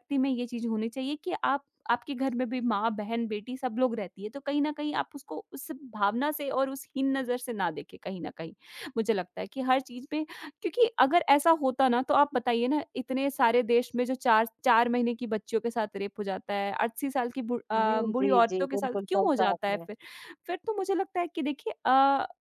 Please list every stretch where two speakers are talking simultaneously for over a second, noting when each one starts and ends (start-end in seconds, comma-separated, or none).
17.8-19.9